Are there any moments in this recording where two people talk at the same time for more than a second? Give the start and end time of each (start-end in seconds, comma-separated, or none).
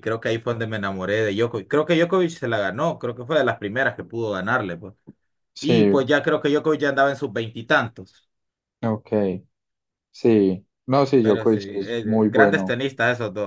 11.2-12.8